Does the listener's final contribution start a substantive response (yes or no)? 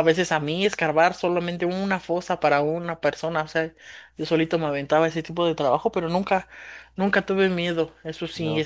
no